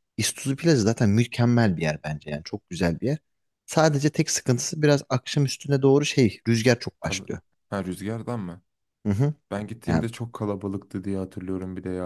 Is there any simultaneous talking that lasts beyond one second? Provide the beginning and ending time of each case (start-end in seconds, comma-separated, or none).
none